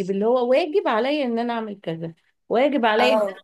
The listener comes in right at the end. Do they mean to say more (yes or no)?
no